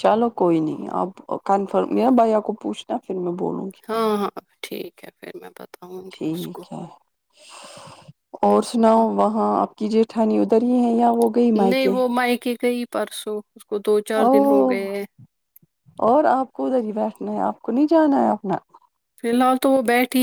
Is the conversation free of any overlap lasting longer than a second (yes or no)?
yes